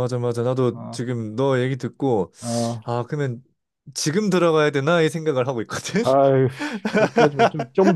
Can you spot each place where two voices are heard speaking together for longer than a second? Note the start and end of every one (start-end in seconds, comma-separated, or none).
none